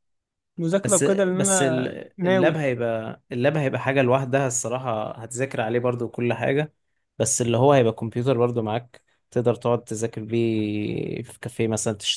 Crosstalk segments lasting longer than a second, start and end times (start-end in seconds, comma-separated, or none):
0.8-2.6